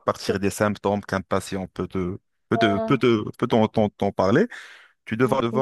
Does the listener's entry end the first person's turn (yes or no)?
no